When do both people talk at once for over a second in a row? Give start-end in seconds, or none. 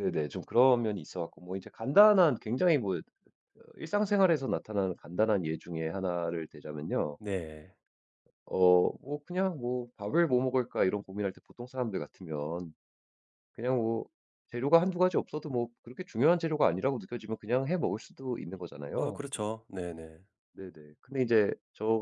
none